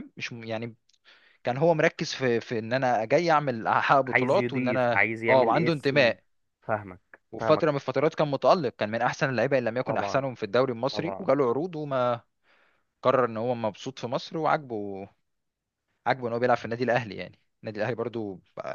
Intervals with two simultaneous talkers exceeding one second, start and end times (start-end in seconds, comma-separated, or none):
4.1-6.2